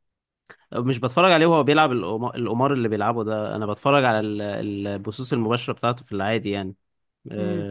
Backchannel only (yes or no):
no